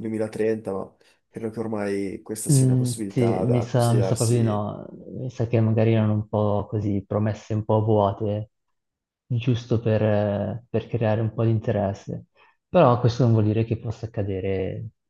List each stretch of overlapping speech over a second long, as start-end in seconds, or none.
2.5-4.7